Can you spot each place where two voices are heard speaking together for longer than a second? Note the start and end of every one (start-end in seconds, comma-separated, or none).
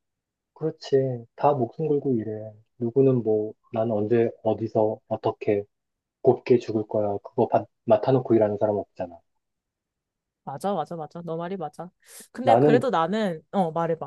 none